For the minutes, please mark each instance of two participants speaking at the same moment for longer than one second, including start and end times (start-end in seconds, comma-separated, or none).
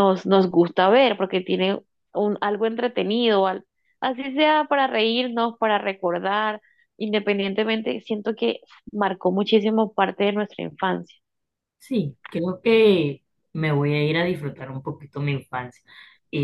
none